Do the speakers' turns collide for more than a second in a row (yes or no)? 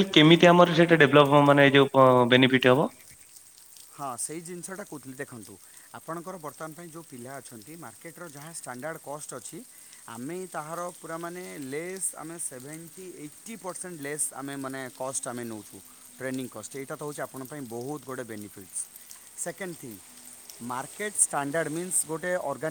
no